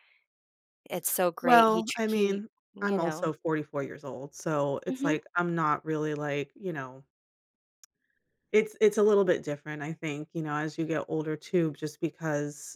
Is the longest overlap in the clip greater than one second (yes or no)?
yes